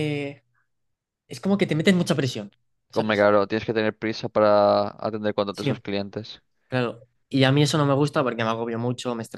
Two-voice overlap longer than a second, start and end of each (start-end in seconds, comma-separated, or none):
none